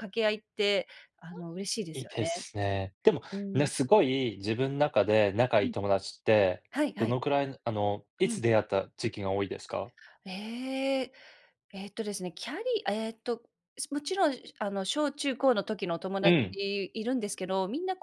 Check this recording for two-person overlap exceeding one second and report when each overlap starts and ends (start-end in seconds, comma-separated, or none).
none